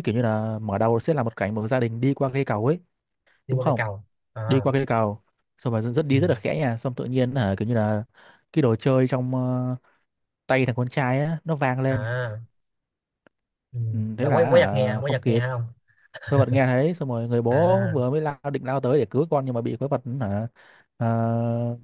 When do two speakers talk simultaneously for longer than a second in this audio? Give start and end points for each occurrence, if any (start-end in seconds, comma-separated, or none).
14.2-15.4